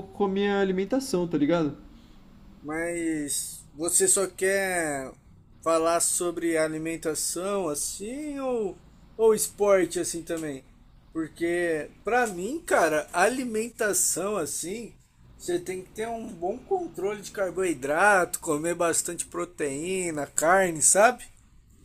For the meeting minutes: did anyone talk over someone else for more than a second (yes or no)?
no